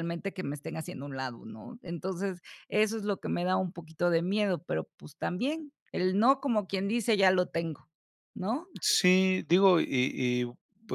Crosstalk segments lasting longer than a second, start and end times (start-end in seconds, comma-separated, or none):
none